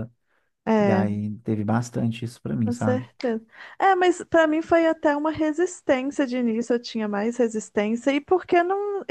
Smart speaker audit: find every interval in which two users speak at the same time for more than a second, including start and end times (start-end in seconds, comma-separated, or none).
none